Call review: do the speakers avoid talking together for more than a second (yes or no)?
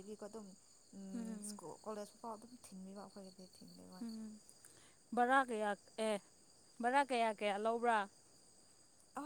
yes